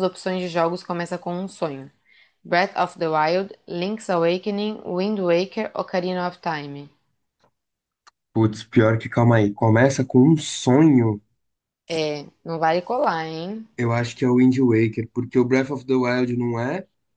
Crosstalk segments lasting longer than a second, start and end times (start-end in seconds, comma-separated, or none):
none